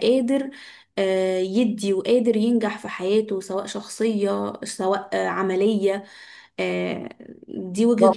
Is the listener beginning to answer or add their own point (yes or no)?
yes